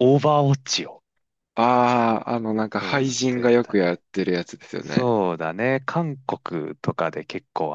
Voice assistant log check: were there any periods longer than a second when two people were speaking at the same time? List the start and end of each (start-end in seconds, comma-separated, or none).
2.7-4.0